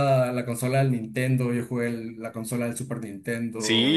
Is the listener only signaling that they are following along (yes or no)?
no